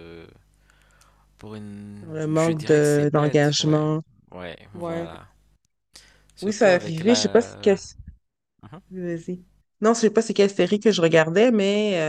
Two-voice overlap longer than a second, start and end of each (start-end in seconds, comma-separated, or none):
2.0-3.8, 6.4-7.8